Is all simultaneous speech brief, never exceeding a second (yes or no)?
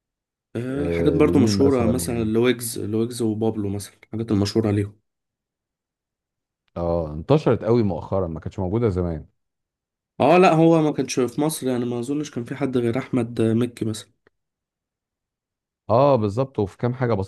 no